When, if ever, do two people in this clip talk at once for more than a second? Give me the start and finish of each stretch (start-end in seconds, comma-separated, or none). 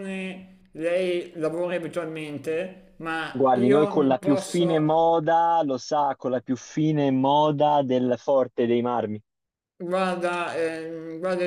3.3-5.1